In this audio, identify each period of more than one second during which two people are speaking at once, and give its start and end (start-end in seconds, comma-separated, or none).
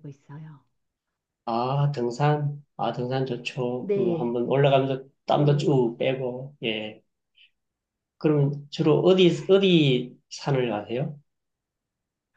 none